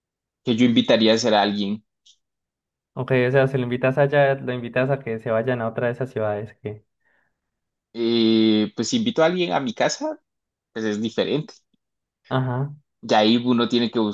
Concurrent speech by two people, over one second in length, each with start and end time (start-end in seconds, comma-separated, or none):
none